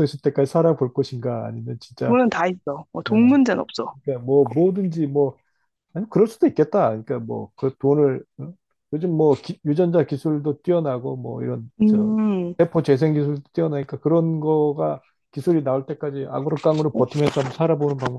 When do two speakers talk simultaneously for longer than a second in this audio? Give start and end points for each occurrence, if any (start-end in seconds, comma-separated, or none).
none